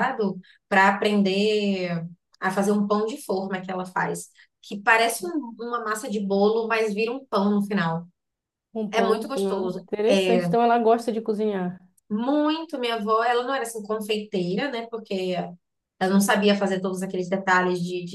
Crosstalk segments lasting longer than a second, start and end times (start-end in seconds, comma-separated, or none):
8.9-10.5